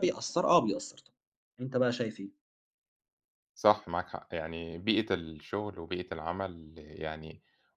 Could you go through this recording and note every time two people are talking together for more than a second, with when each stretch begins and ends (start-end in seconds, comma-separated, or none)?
none